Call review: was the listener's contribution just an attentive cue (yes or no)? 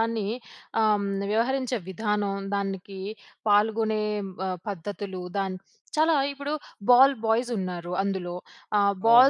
yes